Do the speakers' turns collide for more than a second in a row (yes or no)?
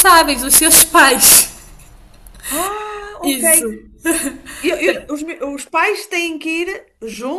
no